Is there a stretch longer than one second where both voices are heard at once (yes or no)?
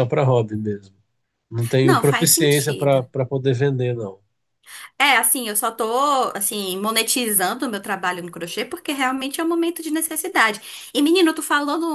yes